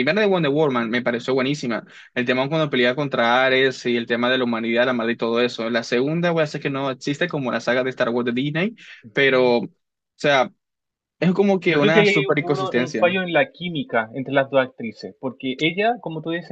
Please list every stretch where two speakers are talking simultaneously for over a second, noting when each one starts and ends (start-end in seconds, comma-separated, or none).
11.7-13.1